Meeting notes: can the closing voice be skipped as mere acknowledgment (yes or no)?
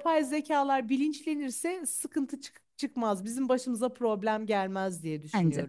no